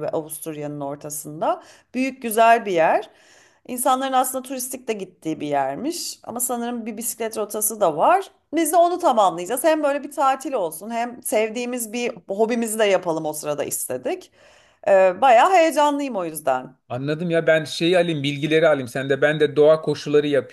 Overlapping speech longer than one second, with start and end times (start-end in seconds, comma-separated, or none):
none